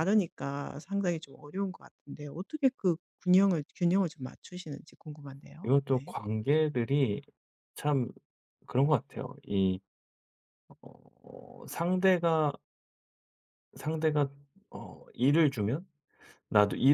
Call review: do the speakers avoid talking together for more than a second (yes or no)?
yes